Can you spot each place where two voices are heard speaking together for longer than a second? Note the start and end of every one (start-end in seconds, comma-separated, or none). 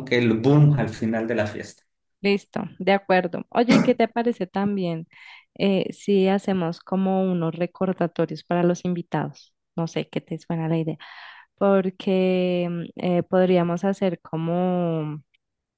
none